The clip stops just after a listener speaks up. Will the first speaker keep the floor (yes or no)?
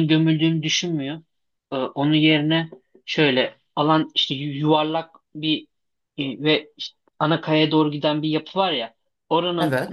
yes